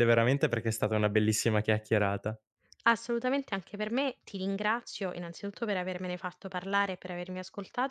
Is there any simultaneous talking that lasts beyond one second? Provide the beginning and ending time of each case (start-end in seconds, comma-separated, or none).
none